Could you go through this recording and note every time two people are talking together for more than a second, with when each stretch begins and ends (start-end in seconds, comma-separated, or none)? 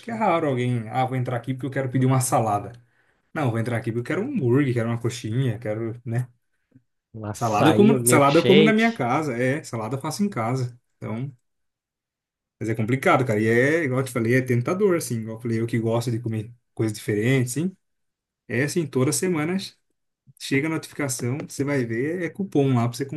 7.3-9.0